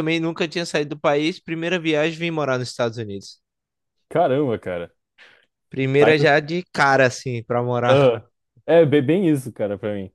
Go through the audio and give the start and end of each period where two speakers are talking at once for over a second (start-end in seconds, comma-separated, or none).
none